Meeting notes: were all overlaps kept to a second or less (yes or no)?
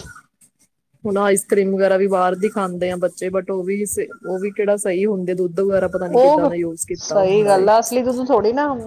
yes